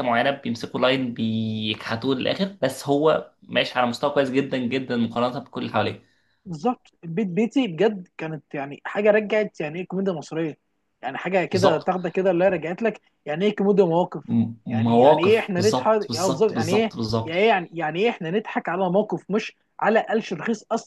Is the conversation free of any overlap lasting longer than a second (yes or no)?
no